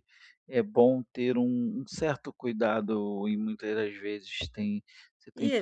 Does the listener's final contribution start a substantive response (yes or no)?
yes